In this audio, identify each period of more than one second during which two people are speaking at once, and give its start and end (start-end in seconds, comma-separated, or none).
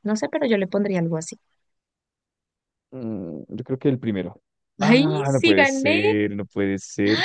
4.8-6.0